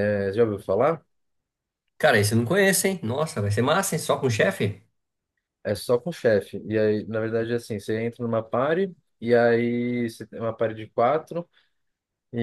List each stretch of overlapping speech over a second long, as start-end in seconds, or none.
none